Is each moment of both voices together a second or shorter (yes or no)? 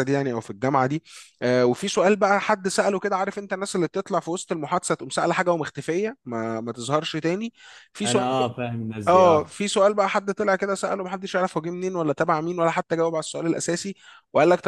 yes